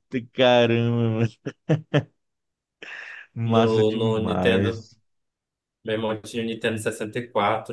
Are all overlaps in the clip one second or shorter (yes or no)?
no